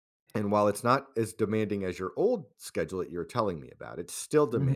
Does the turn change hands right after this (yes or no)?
no